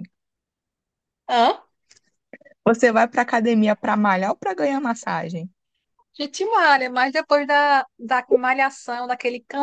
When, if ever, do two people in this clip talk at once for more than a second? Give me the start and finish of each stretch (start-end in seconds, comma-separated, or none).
none